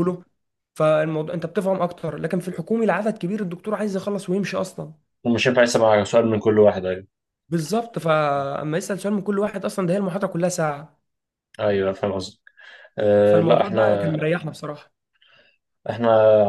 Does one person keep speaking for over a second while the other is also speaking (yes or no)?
no